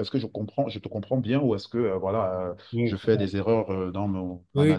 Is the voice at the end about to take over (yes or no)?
yes